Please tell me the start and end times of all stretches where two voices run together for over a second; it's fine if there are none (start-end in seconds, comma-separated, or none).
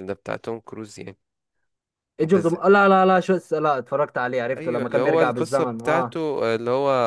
4.6-6.2